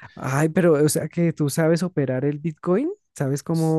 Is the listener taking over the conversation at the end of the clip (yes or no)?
no